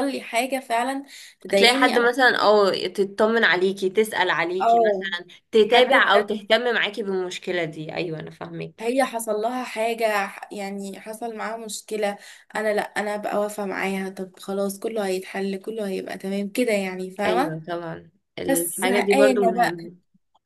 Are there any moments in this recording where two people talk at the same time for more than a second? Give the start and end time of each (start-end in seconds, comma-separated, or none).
18.5-19.8